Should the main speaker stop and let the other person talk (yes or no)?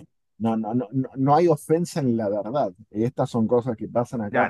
yes